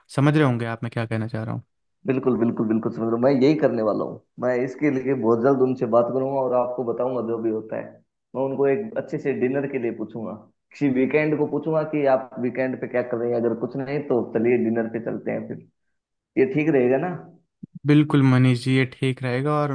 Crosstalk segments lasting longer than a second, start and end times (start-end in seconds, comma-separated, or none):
none